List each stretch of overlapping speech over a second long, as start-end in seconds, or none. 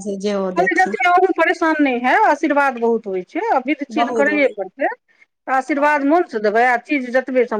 none